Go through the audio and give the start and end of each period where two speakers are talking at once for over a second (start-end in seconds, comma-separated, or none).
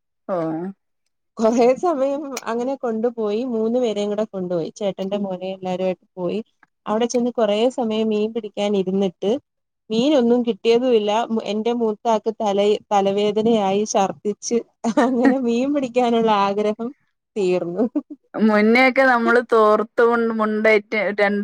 none